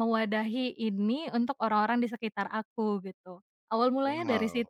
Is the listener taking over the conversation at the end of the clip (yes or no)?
yes